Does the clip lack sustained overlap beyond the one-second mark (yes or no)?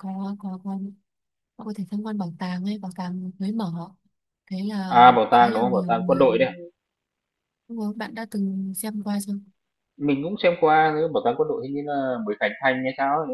no